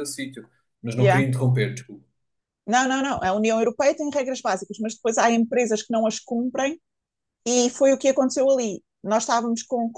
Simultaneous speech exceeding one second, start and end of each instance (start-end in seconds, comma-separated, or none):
none